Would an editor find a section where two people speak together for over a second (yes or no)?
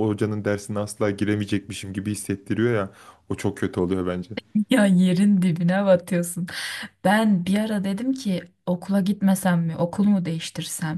no